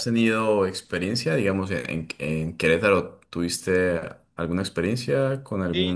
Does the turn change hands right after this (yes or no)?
yes